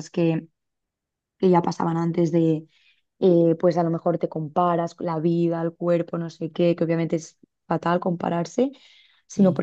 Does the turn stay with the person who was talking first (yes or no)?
yes